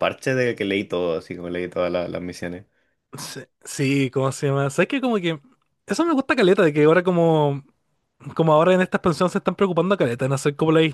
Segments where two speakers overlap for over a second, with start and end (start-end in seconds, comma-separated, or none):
none